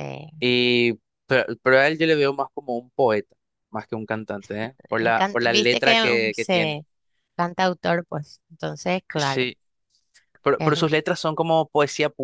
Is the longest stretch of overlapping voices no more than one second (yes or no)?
no